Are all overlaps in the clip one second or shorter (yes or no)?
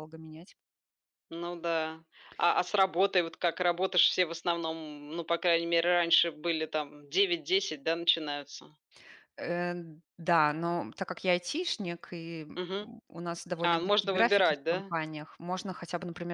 no